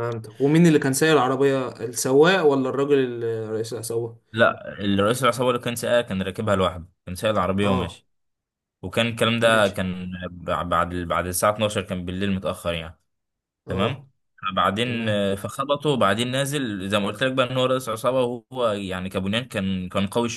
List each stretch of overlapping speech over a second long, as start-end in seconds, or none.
none